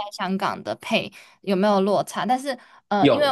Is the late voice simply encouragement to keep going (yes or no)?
yes